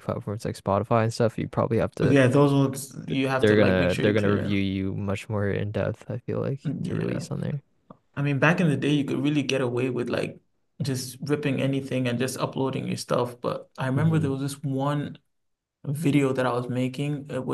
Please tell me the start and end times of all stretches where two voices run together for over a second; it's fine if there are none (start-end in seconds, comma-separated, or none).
3.1-4.6